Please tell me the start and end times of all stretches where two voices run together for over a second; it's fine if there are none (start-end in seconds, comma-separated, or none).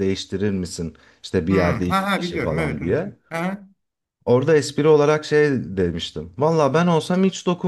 1.5-3.2